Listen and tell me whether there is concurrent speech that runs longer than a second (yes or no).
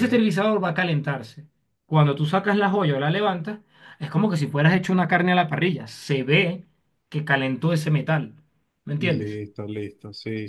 no